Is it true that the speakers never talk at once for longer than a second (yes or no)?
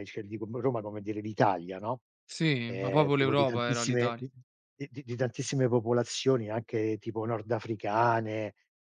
no